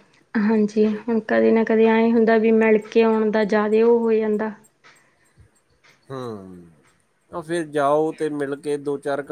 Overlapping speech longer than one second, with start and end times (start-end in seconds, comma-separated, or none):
none